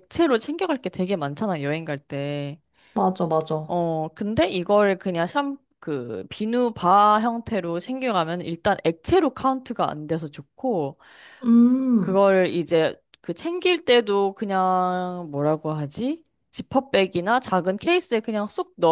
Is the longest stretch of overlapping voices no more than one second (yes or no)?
yes